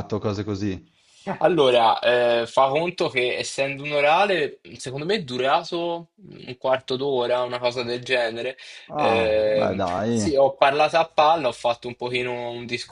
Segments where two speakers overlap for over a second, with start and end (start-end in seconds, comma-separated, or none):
8.9-10.4